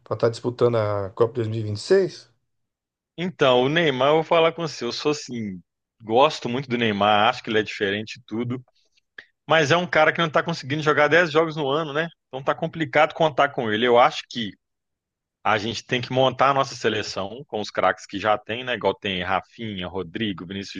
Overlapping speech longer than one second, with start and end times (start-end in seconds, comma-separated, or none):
none